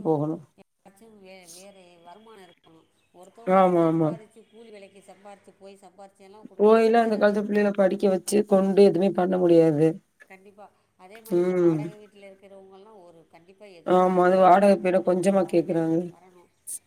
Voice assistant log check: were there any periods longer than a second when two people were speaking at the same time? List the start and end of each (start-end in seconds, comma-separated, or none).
14.0-16.0